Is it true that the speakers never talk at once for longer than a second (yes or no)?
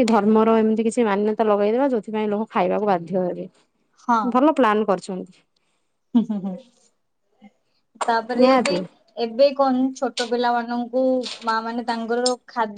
yes